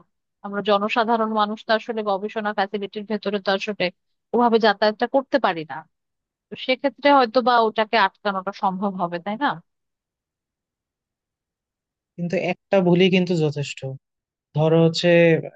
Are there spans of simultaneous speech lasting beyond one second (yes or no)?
no